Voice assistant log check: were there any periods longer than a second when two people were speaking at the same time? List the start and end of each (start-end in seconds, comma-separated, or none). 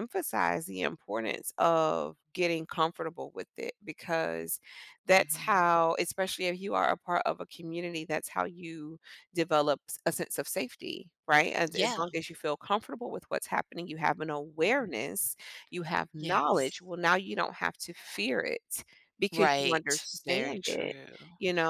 19.3-20.9